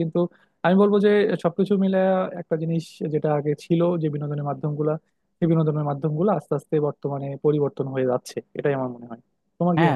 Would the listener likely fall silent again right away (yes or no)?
no